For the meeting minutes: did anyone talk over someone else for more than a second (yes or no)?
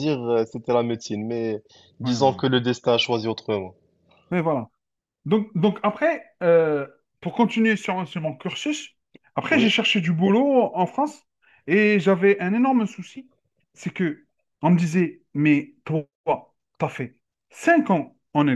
no